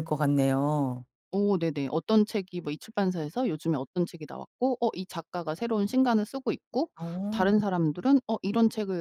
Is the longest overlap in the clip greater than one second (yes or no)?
no